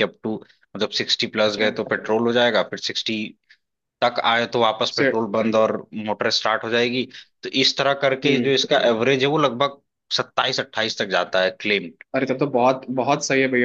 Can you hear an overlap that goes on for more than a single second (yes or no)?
no